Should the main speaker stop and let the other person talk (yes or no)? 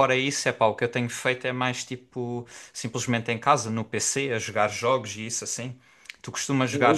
no